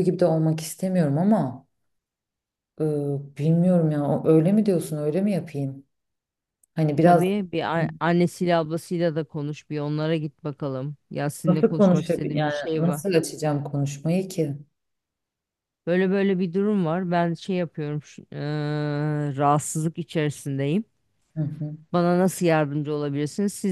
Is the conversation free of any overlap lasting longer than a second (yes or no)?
no